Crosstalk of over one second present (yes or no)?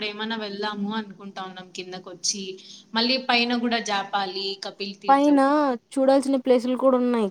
no